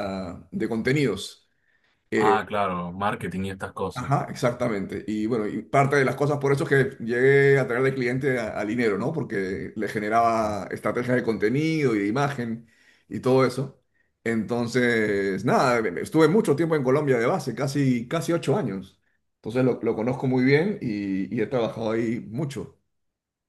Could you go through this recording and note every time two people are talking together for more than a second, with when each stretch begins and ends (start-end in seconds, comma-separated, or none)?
none